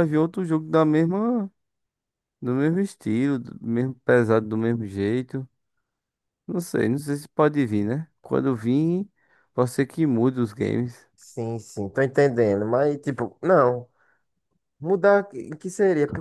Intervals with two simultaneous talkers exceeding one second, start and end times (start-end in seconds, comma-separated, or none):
none